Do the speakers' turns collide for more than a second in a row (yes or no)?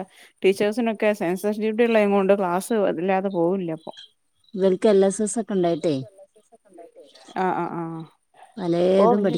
no